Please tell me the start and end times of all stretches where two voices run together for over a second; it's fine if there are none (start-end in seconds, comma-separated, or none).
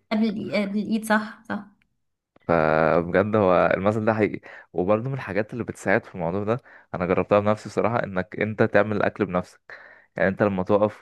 none